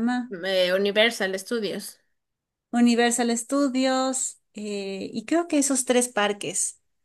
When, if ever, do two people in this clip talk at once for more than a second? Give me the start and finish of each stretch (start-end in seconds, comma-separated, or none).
none